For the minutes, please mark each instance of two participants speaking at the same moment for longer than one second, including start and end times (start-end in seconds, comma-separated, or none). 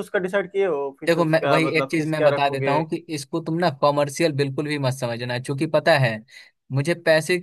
1.1-2.8